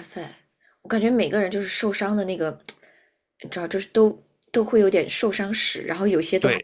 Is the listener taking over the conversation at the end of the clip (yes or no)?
yes